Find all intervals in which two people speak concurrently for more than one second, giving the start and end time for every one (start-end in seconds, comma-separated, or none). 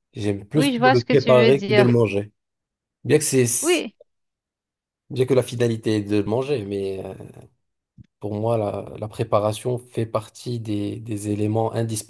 0.6-1.9